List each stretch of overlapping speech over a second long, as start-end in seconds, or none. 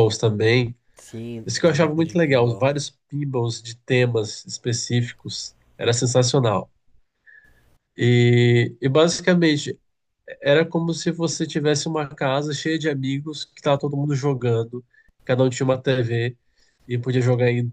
1.5-2.7